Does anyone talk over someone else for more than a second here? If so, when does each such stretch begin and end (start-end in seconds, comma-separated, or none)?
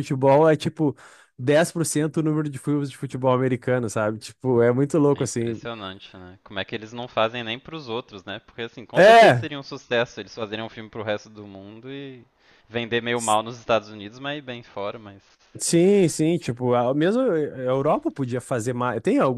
none